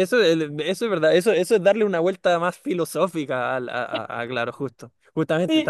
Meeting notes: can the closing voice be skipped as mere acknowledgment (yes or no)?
no